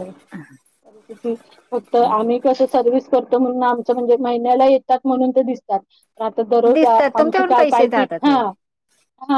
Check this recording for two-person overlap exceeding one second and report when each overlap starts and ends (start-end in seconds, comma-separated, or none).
6.7-8.3